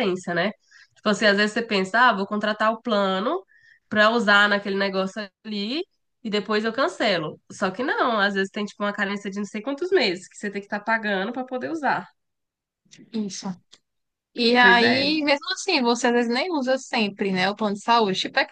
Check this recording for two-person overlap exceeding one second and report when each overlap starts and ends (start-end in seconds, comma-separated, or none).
none